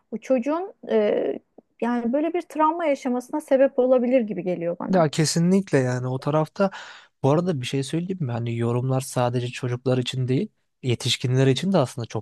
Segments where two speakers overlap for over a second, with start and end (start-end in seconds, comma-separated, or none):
none